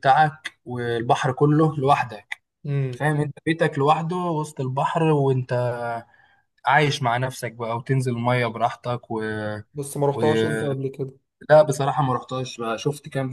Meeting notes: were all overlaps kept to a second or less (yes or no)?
yes